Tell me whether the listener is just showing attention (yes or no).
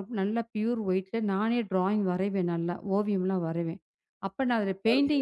yes